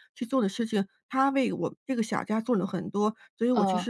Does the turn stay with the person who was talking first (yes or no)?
yes